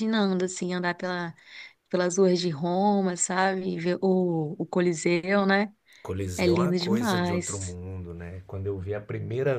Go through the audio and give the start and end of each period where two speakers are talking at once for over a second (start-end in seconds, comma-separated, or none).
6.4-7.8